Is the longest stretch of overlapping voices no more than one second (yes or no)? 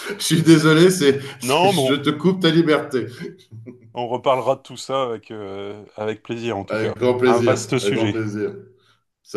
no